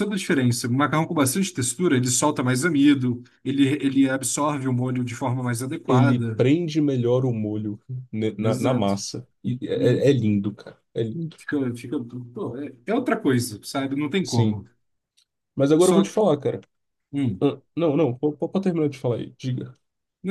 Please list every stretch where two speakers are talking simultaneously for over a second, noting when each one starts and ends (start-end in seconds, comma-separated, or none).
none